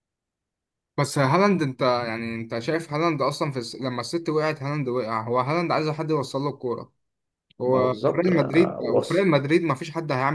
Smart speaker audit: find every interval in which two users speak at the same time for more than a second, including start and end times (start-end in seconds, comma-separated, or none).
7.7-9.3